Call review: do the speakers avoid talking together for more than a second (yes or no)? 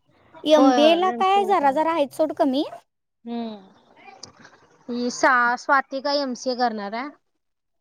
no